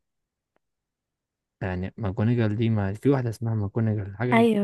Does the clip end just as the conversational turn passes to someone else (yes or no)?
yes